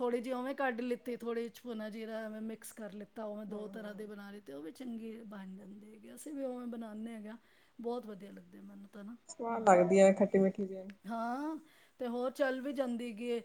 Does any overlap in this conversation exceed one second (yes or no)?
no